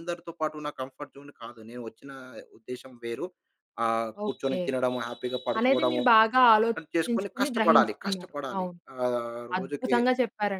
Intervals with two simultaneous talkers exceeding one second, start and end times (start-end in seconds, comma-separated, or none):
6.8-8.7